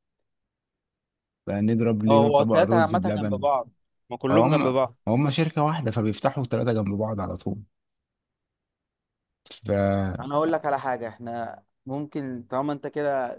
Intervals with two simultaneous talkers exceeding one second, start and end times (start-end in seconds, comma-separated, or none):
2.1-3.4